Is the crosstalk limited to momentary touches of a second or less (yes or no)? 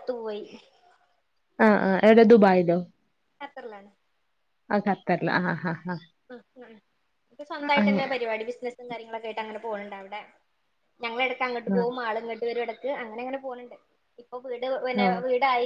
yes